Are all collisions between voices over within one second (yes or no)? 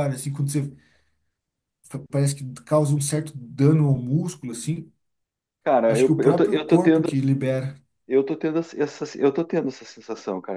no